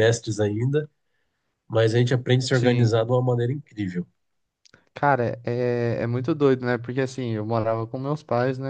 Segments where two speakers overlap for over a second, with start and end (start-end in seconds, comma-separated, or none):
none